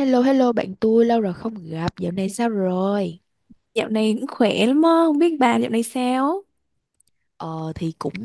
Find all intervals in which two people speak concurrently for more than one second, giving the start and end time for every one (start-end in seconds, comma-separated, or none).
none